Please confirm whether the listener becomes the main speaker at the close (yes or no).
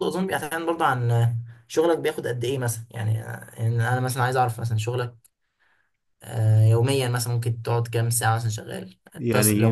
yes